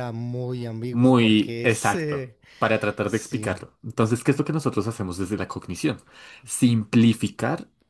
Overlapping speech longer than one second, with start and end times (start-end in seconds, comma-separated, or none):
0.9-2.4